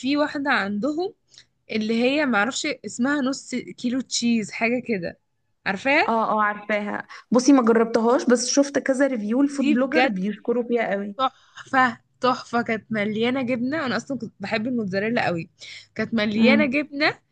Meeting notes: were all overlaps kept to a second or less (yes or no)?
yes